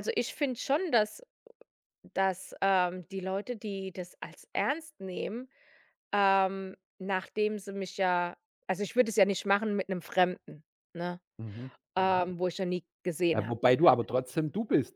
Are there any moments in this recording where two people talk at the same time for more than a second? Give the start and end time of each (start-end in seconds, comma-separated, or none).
none